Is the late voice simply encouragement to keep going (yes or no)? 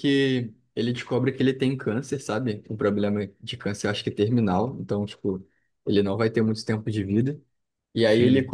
yes